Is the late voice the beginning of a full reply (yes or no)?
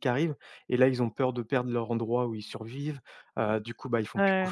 no